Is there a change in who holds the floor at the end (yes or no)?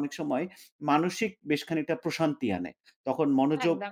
no